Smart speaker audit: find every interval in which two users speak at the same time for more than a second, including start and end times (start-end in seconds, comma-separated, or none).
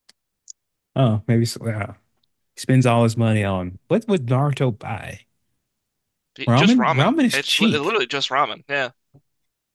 6.5-7.8